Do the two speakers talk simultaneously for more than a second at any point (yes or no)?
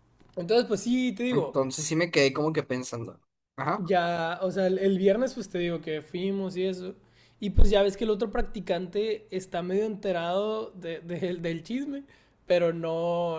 no